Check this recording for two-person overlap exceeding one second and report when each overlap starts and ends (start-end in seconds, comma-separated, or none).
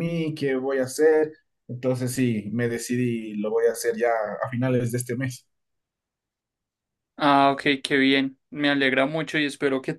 none